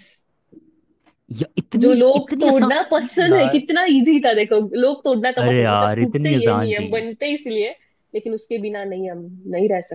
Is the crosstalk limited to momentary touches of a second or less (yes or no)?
no